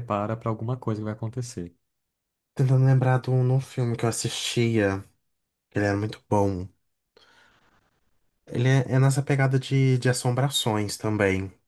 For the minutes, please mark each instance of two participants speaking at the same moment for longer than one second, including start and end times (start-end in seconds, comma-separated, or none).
none